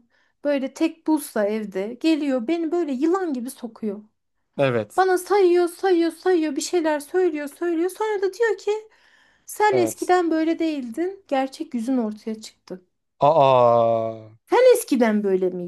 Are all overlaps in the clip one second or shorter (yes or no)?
yes